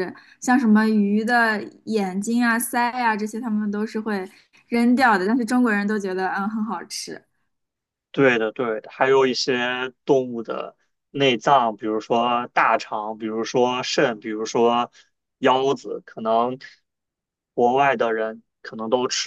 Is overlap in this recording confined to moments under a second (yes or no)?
yes